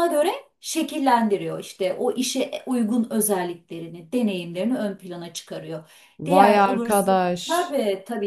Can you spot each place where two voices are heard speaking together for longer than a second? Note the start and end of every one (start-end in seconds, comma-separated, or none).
6.3-7.8